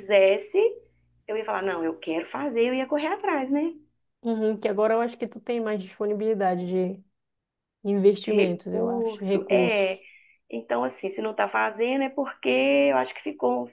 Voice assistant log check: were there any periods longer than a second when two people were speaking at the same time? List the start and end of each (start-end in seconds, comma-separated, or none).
8.3-10.0